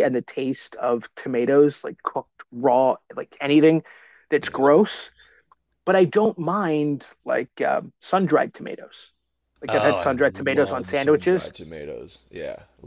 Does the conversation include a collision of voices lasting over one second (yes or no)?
yes